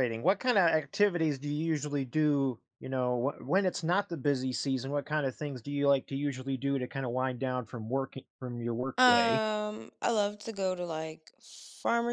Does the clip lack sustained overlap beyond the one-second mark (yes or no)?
yes